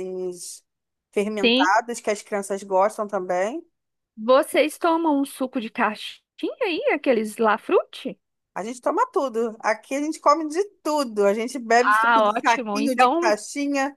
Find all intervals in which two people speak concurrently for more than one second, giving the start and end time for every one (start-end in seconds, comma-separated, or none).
11.8-13.4